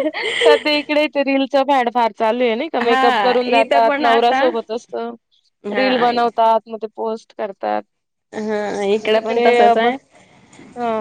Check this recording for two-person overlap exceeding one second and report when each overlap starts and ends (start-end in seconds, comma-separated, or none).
2.8-4.4